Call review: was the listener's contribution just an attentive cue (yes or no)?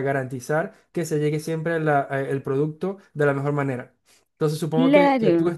yes